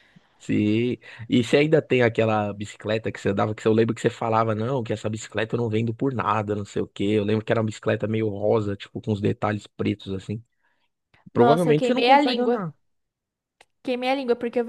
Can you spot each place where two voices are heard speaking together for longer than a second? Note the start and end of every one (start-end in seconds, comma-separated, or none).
11.3-12.6